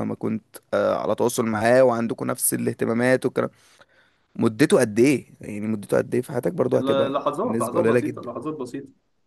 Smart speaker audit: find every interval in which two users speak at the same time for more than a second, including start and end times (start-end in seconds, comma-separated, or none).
6.7-8.3